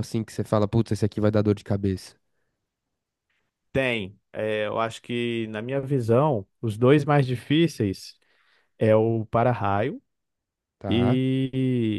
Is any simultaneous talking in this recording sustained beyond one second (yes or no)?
no